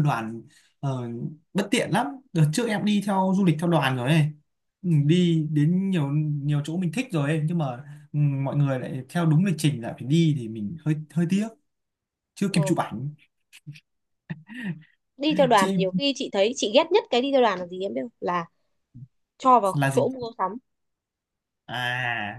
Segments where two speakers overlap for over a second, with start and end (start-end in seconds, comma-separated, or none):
none